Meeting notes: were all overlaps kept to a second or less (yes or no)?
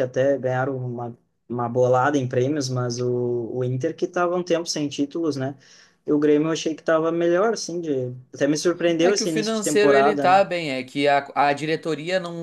no